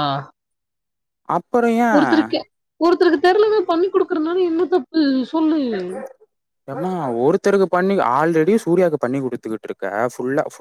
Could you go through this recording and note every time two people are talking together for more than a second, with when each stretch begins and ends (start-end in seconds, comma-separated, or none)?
none